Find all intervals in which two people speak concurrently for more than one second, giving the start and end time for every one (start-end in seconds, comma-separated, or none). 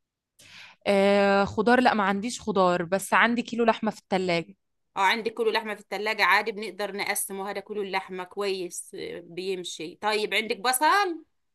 none